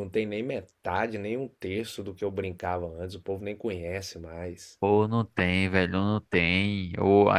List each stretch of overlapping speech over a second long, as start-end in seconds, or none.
none